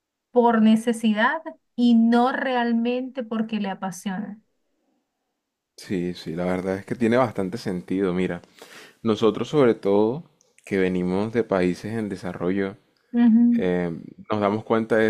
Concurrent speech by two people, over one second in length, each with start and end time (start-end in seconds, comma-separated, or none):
none